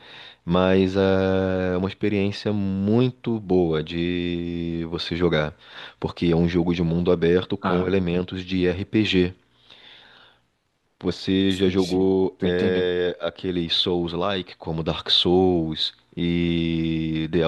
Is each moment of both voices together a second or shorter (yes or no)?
no